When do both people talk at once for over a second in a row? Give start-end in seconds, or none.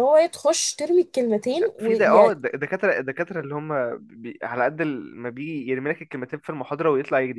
none